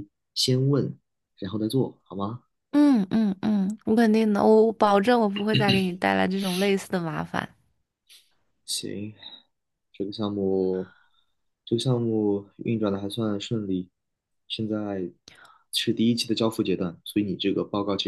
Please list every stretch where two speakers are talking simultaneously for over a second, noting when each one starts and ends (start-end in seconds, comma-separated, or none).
none